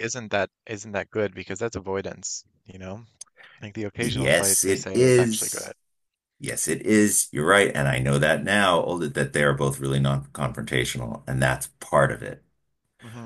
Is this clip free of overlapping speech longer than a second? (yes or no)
no